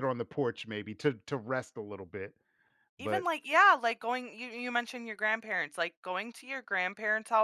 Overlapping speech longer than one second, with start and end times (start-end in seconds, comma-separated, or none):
none